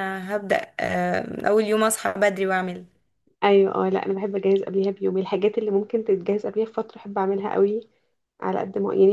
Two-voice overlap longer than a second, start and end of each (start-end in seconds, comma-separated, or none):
none